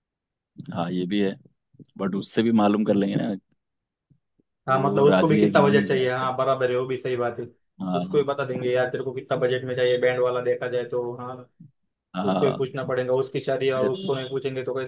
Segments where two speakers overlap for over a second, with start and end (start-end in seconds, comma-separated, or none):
4.7-6.3